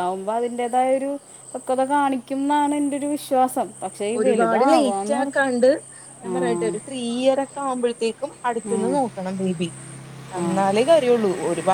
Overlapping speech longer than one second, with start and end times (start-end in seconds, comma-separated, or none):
4.2-5.4